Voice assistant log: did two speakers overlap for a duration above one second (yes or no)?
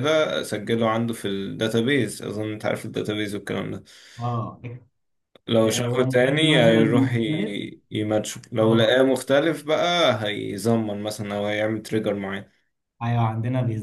yes